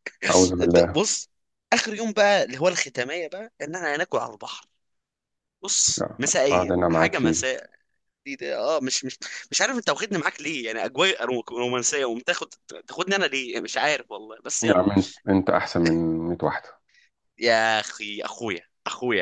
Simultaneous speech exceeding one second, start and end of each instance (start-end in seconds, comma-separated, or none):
6.0-7.4